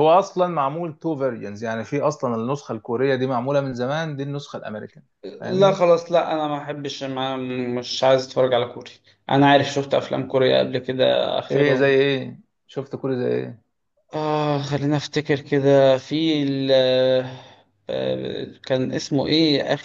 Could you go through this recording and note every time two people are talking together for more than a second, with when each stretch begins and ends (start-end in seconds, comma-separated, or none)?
none